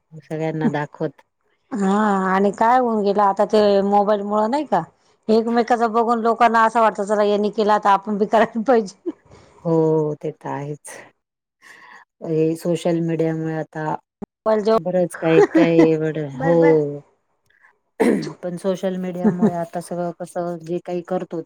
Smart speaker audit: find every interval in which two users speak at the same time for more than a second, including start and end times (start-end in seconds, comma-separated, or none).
none